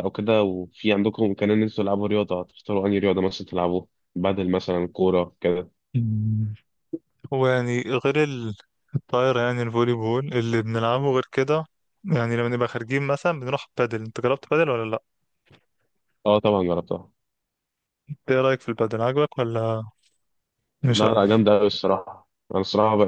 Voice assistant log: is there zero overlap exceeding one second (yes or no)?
yes